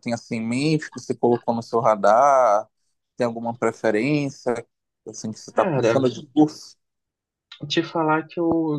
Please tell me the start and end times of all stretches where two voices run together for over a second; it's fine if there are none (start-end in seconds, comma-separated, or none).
none